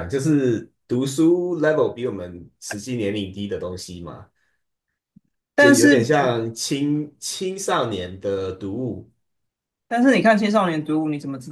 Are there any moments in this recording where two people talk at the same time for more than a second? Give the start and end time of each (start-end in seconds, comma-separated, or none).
none